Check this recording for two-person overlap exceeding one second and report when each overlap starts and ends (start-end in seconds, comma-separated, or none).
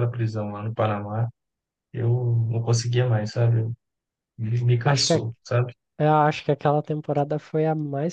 none